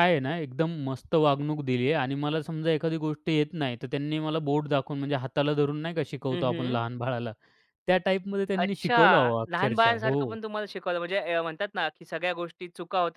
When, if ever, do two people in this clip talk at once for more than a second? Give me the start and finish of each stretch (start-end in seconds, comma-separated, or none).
8.6-10.3